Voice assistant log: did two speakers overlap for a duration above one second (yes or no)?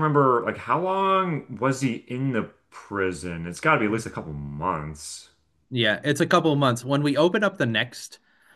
no